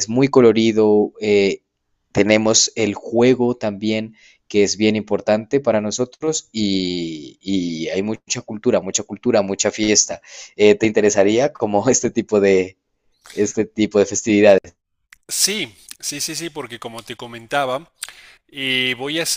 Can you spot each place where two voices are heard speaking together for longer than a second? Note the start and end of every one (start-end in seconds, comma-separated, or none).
none